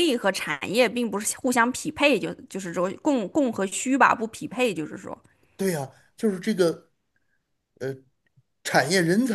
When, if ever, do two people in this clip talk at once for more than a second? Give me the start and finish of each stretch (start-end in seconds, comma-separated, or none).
none